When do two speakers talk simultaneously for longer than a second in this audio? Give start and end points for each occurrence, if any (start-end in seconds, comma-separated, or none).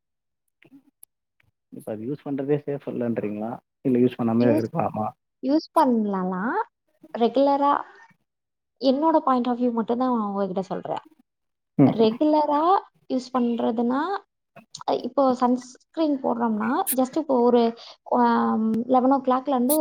none